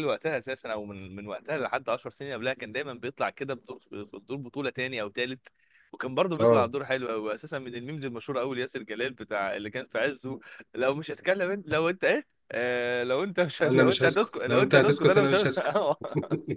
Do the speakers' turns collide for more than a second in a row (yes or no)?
yes